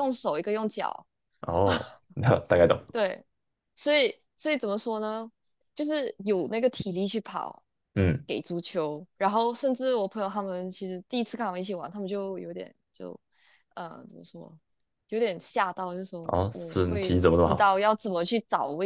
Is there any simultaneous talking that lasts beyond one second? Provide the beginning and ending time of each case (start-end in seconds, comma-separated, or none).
16.2-17.7